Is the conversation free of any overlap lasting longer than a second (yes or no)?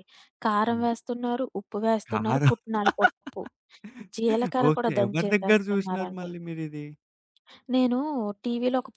no